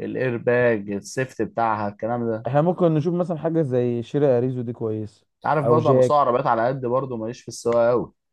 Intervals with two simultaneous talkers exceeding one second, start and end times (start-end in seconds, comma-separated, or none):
none